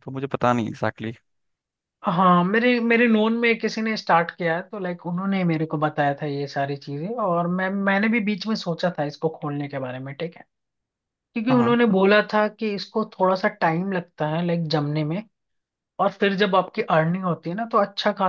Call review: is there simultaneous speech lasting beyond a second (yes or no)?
no